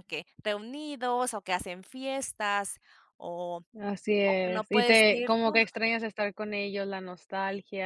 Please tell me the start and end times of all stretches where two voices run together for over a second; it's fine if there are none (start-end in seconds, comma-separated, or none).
4.2-5.6